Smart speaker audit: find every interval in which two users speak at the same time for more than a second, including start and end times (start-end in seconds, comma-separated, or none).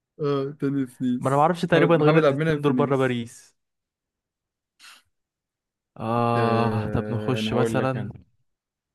1.2-3.2, 6.4-8.1